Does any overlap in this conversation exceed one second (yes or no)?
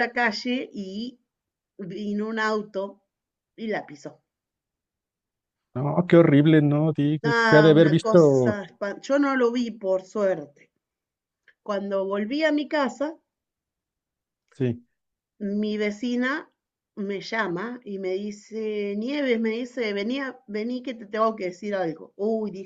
yes